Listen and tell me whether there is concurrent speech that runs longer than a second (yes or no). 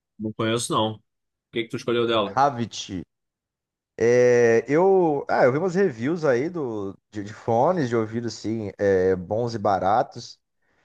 no